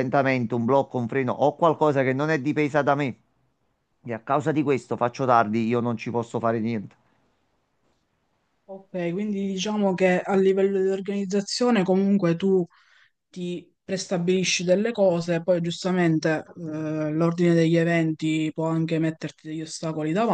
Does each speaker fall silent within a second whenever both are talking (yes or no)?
yes